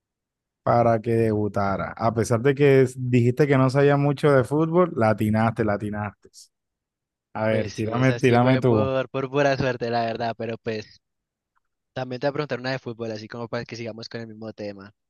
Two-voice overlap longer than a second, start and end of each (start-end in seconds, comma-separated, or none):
7.5-8.7